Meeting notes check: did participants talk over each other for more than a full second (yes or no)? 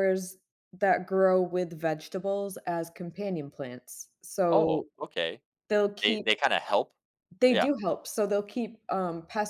no